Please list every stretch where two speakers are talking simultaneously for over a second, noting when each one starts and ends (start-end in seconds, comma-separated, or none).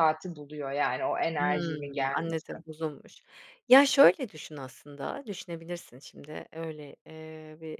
1.4-2.6